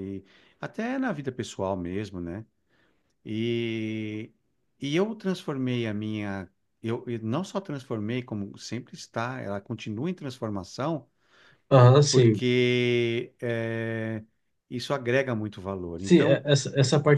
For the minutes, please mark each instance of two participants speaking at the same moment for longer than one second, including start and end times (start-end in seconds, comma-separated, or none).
none